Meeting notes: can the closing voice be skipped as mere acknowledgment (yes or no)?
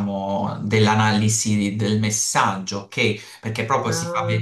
yes